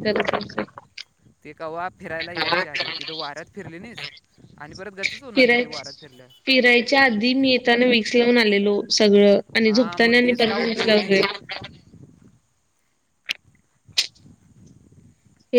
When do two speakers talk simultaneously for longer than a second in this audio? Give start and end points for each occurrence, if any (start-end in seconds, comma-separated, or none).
9.7-11.2